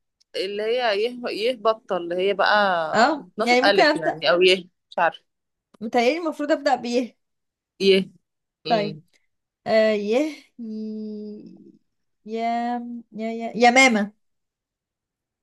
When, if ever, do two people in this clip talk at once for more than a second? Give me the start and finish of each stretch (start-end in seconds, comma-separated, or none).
2.9-4.2